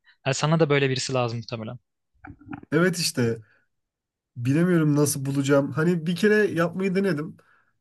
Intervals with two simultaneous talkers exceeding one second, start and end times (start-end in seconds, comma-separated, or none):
none